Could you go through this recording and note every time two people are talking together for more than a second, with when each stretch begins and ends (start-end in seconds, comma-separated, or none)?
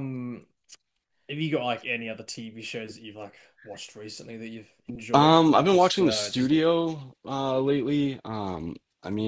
5.1-6.5